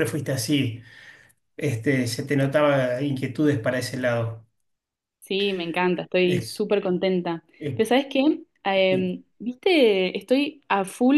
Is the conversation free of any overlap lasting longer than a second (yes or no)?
yes